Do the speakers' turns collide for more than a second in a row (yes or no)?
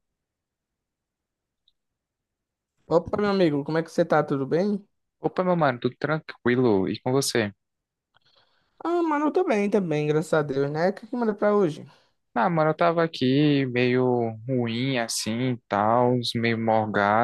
no